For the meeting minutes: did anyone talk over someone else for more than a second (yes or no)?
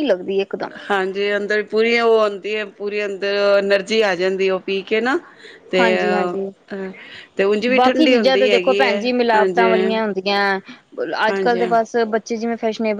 yes